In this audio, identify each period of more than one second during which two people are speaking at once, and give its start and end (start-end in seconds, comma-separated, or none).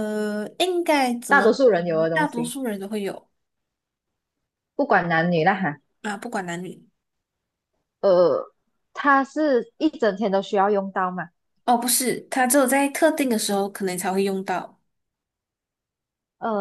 1.3-2.5